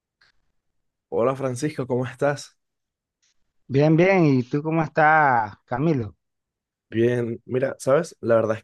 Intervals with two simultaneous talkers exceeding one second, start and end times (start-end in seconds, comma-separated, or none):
none